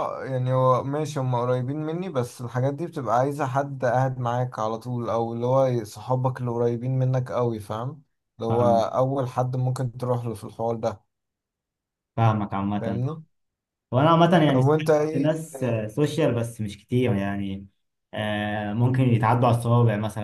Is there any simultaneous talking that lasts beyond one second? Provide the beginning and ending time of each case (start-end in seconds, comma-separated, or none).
14.4-15.8